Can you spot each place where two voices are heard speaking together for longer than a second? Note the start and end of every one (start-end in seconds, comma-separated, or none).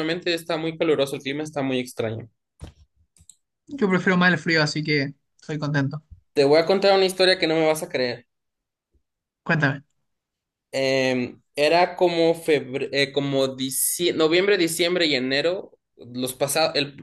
none